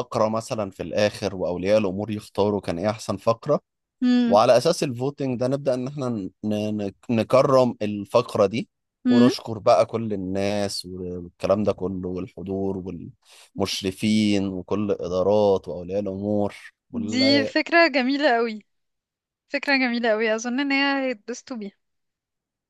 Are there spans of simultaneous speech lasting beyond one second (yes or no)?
no